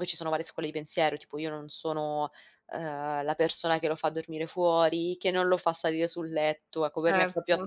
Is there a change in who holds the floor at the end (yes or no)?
no